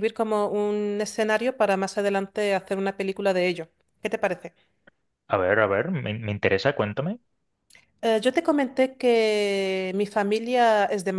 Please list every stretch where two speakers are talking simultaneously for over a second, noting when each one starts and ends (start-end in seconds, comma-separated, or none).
none